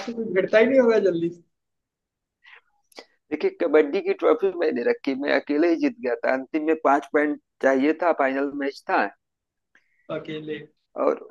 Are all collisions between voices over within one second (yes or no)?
yes